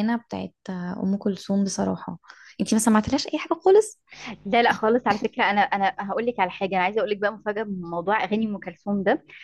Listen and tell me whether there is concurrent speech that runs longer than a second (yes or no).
no